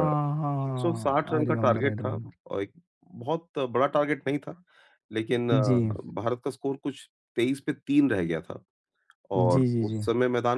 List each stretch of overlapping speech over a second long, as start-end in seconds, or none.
0.7-2.4